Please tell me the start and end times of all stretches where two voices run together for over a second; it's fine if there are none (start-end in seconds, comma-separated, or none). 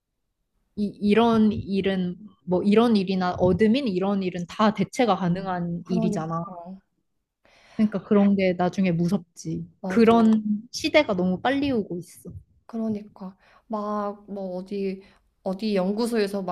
none